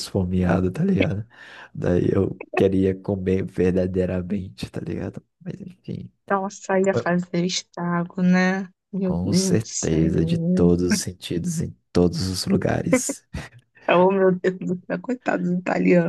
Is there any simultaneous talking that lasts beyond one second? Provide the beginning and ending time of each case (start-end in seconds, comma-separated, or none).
9.0-10.7